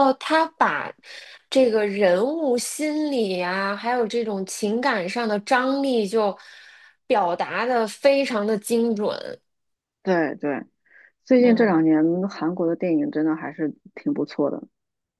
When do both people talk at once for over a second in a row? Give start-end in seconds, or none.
none